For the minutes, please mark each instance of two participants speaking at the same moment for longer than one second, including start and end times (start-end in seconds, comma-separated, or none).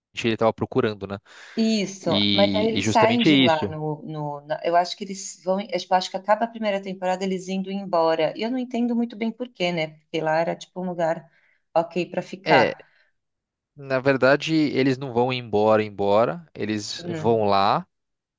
2.0-3.7